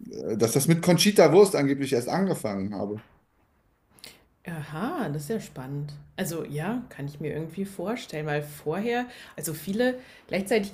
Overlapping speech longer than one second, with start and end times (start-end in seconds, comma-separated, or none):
none